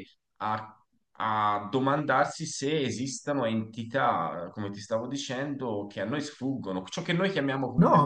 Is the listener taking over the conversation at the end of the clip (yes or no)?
yes